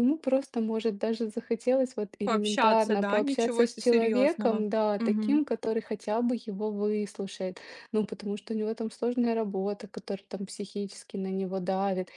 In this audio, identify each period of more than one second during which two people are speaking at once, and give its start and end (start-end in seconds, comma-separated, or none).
2.2-5.4